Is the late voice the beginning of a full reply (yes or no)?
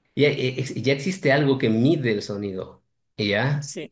no